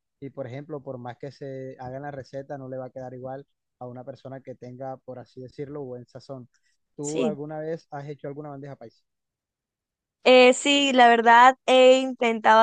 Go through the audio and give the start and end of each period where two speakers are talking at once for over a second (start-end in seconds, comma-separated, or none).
none